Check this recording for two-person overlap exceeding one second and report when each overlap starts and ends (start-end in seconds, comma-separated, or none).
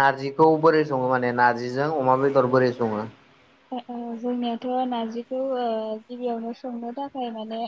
none